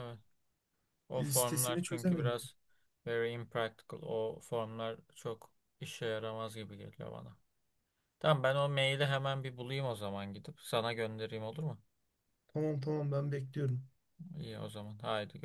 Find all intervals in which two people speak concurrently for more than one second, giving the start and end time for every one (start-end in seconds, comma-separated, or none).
1.2-2.4